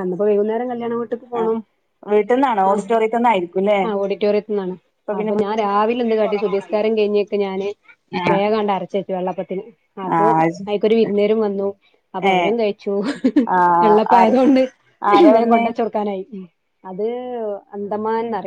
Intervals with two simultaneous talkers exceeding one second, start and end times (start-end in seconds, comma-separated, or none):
5.2-6.9